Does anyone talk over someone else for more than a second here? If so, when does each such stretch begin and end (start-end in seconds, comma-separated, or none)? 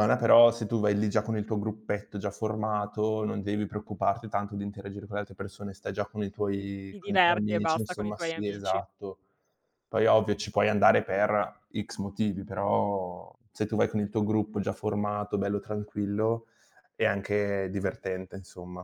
6.5-8.8